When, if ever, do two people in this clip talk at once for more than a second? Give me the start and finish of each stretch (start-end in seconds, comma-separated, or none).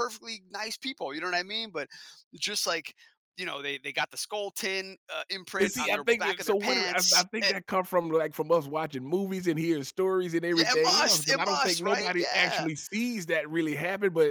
5.6-7.5, 10.5-12.7